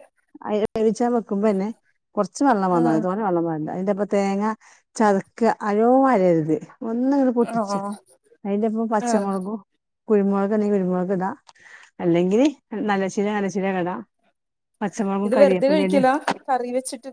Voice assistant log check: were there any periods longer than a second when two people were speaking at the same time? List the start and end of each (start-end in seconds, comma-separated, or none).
none